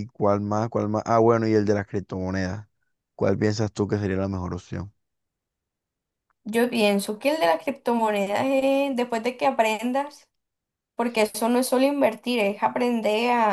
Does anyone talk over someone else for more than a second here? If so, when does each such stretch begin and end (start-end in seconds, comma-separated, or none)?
none